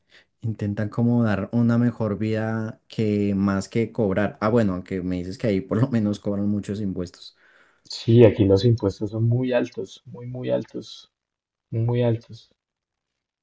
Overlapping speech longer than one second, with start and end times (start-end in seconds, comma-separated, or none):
none